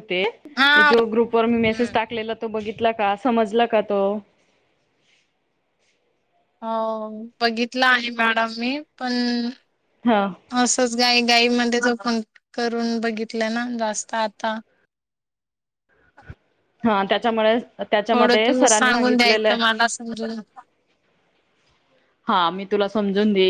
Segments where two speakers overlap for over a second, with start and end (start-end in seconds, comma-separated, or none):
18.1-19.6